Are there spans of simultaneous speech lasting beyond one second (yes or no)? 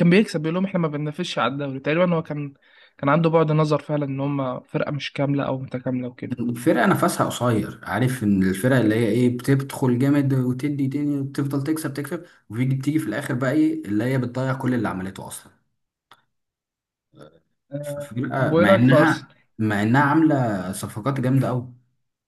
yes